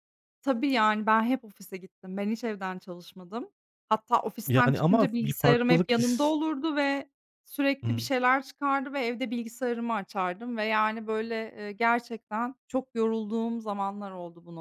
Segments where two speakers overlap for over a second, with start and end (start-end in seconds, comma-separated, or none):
4.5-6.3